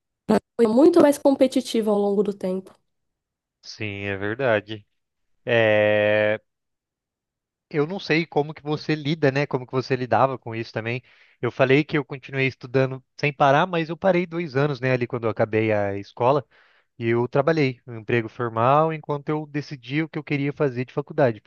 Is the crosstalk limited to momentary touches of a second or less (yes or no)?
yes